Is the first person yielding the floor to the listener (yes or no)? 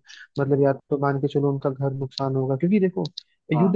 no